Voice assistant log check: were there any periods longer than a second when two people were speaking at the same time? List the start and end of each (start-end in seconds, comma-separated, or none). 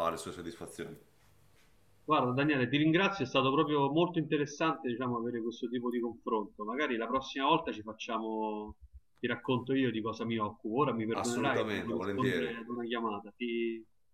11.1-12.5